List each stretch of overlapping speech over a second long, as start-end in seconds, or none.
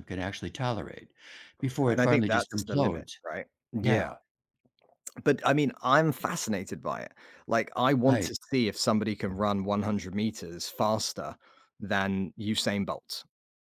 1.9-3.1